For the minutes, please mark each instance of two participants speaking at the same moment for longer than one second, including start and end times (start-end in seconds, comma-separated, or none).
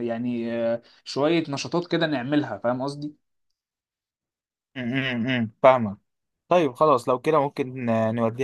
none